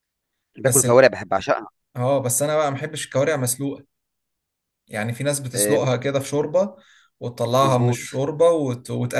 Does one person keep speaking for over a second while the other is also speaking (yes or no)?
no